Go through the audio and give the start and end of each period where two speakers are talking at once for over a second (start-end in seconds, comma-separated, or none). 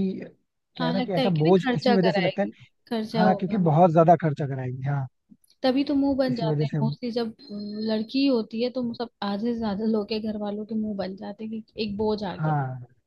0.8-2.5